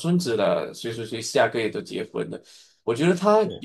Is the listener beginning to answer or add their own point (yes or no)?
no